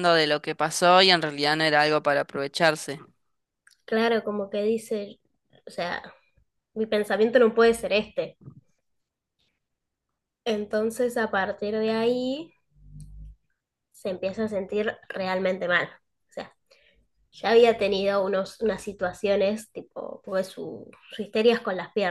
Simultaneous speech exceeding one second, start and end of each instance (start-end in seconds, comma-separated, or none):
none